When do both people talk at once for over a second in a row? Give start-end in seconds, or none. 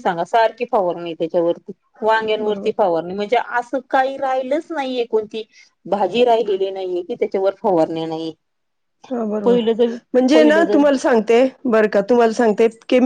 none